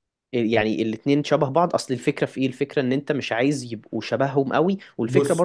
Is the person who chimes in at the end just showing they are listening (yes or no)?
yes